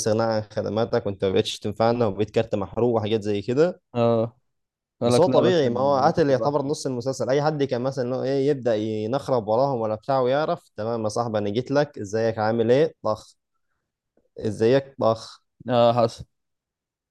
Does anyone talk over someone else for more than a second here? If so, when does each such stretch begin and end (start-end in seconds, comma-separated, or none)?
5.0-6.7